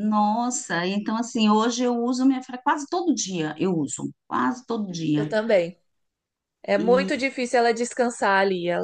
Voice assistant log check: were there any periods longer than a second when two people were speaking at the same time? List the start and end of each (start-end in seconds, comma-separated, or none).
none